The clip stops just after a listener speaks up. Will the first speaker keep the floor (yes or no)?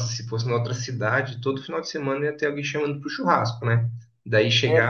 yes